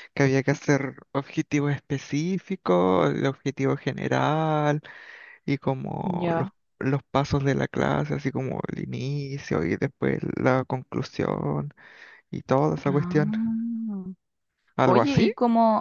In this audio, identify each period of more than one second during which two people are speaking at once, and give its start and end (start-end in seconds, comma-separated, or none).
none